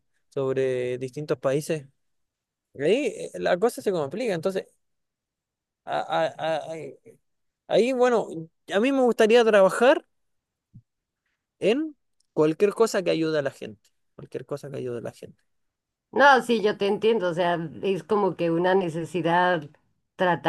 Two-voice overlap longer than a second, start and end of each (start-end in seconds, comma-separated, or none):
none